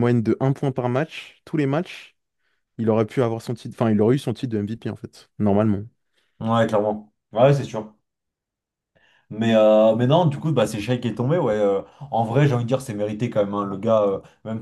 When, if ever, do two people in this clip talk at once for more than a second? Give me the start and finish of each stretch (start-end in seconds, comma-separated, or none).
none